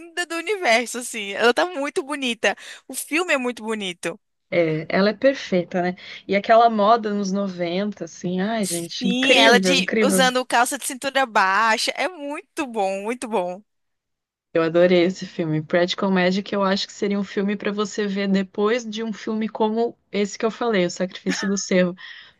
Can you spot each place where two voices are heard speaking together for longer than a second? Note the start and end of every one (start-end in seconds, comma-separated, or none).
8.6-10.3